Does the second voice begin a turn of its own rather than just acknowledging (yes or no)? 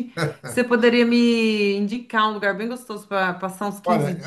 yes